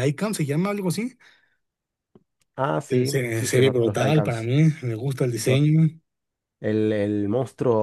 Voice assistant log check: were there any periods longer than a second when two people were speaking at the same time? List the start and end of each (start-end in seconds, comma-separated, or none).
2.9-4.5